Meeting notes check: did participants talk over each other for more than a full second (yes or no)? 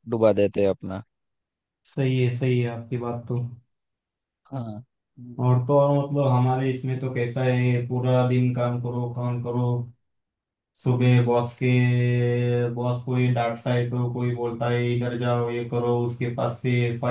no